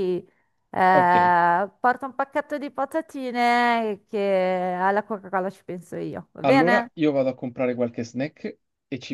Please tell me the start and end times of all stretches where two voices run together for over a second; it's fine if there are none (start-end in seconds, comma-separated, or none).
none